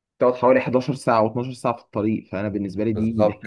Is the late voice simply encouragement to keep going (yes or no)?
no